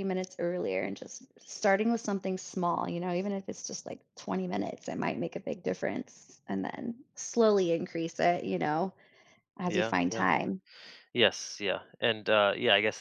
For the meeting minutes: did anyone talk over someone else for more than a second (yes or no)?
no